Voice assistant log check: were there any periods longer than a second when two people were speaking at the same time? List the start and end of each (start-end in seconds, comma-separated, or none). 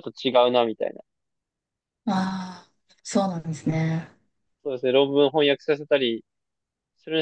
none